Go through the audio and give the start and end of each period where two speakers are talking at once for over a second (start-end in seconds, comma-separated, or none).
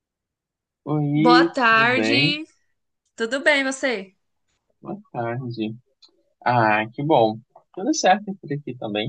1.1-2.4